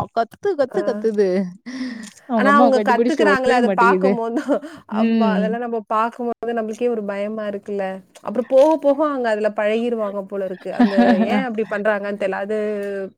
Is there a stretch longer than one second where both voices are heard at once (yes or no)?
yes